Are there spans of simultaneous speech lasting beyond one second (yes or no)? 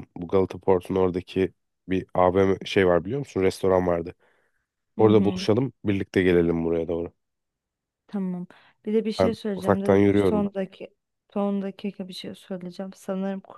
yes